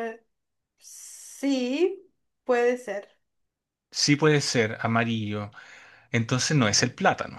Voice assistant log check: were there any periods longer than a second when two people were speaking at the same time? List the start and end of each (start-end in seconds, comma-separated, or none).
none